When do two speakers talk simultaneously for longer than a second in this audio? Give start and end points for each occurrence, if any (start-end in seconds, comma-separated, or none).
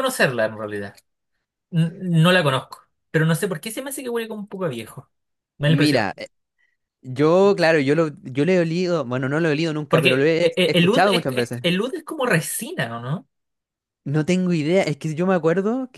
9.9-11.6